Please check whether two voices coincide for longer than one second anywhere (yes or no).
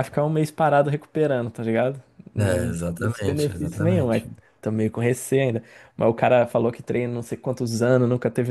yes